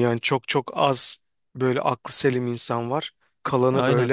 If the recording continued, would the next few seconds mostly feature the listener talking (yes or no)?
no